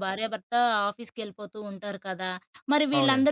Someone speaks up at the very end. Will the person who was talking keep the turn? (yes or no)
yes